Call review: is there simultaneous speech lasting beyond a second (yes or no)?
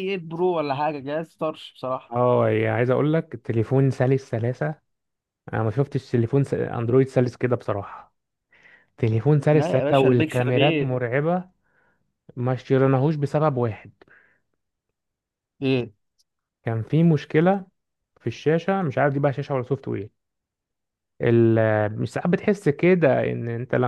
yes